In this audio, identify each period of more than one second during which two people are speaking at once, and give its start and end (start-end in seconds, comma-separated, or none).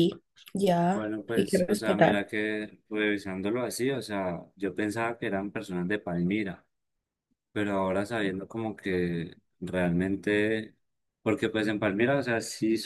0.9-2.2